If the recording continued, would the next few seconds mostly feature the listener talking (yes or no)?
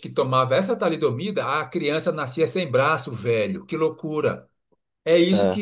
no